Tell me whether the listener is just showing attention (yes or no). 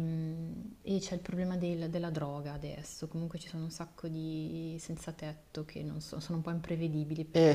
no